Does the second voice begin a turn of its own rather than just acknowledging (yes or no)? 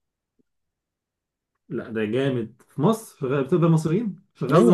yes